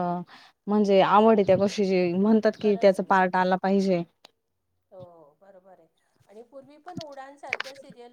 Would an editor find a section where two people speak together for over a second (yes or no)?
no